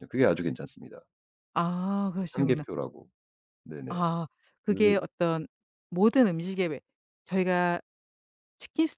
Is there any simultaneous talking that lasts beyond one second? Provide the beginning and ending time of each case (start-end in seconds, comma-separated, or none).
none